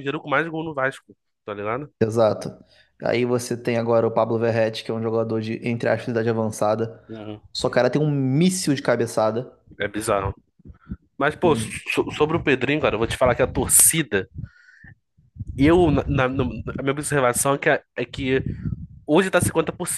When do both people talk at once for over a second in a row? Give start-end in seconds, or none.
none